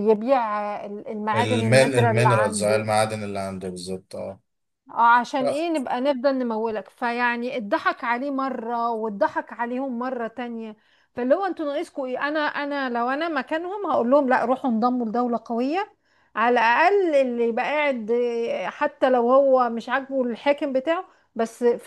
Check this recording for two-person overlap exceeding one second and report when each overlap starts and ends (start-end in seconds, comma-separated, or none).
1.3-2.9